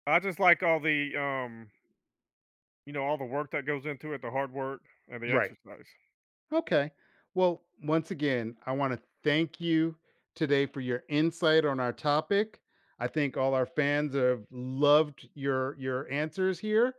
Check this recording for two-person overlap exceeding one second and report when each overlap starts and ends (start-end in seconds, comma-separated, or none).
none